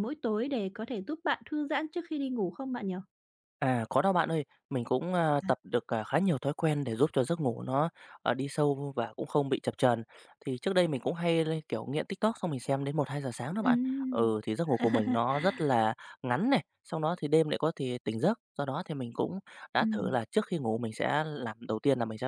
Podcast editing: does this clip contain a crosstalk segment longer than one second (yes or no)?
no